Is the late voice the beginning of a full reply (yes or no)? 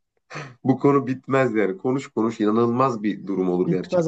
yes